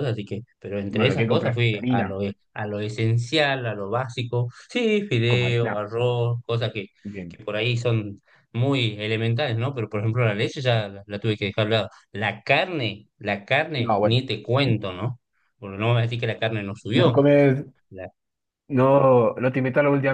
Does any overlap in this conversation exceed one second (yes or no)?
yes